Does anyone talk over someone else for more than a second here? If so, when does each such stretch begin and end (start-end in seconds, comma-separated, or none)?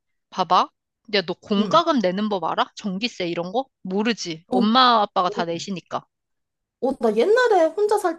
none